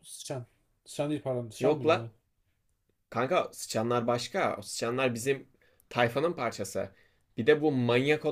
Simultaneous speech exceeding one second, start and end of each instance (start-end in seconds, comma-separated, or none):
none